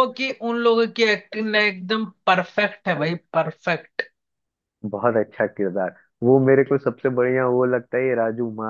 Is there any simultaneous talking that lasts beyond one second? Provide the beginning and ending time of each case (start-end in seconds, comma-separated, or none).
none